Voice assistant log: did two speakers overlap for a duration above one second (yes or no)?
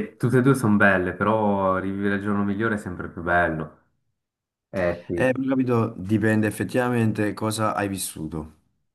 no